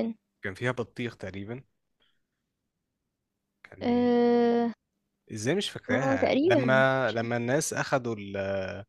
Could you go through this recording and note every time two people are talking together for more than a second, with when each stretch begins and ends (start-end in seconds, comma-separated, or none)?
5.9-7.3